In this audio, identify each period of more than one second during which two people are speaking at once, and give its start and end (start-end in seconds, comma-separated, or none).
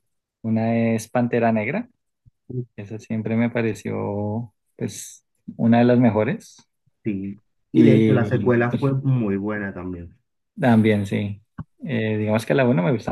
7.7-8.9